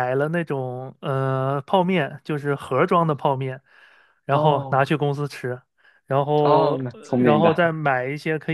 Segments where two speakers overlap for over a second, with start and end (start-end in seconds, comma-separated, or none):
6.4-7.7